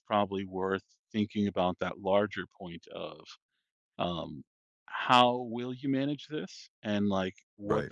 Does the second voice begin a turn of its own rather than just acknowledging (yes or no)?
no